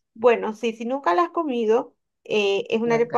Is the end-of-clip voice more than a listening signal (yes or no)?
no